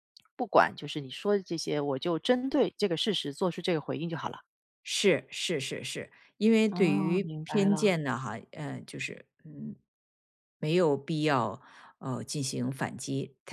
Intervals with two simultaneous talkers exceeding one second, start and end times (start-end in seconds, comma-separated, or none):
6.7-8.0